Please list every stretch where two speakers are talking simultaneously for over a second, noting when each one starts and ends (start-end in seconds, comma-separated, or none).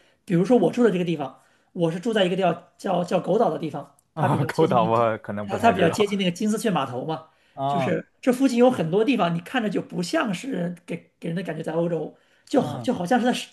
4.1-6.1